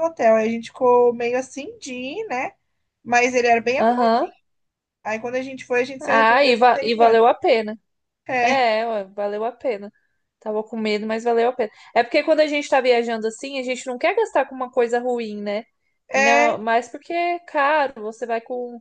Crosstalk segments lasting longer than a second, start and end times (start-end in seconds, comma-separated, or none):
6.0-7.3